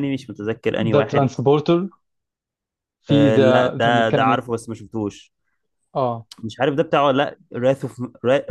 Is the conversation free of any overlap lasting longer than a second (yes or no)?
no